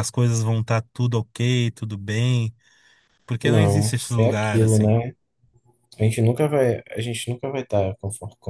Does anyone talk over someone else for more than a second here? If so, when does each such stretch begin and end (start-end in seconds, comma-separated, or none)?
3.4-4.9